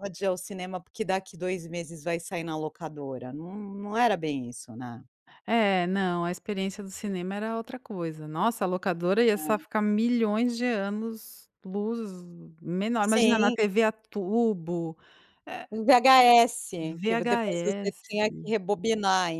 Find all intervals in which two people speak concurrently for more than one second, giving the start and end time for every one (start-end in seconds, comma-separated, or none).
16.8-18.0